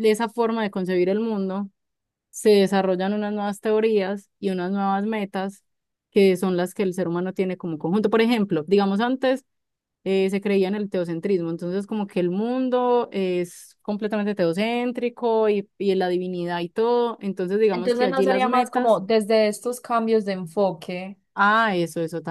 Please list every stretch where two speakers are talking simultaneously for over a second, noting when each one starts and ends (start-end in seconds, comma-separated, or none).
17.7-19.0